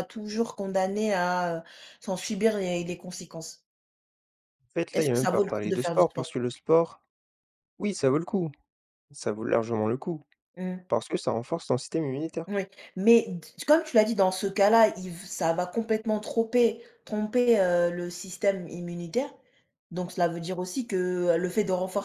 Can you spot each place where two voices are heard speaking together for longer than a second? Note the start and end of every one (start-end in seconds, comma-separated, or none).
4.9-6.3